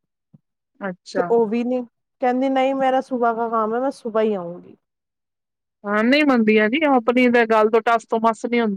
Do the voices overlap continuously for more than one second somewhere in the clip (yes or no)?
no